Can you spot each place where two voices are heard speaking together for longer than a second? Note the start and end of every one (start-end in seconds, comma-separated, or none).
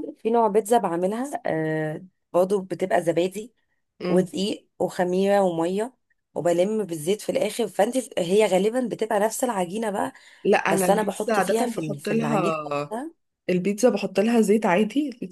10.7-12.9